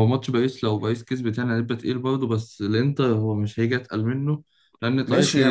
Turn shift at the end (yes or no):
yes